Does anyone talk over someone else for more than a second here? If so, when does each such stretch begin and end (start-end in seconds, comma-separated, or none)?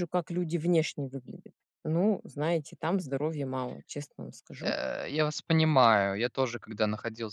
none